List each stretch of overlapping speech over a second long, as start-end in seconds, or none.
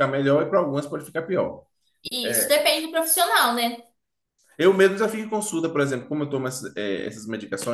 none